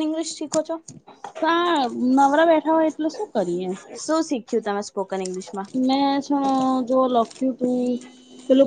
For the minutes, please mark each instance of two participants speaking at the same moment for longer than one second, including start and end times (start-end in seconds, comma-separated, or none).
none